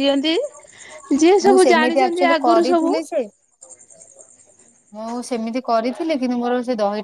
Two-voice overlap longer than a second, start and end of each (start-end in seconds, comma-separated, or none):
1.5-3.0